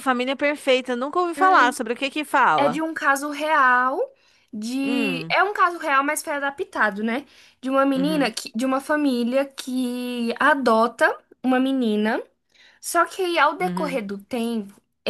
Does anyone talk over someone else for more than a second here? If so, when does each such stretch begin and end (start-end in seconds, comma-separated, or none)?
none